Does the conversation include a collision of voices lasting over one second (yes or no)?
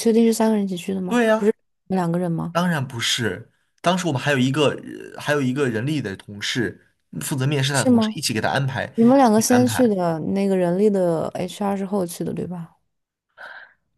no